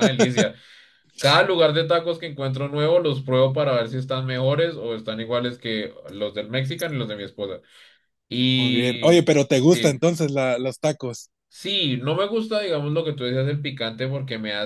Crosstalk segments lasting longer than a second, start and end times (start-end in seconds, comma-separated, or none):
8.5-10.0